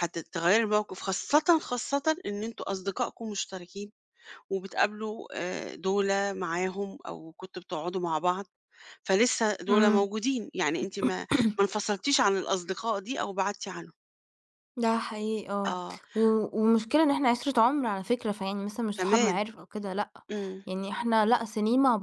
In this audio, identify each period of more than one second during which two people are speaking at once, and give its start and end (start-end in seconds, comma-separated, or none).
none